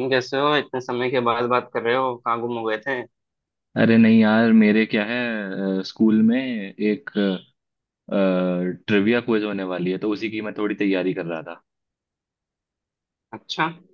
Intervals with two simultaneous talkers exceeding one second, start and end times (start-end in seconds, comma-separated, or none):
none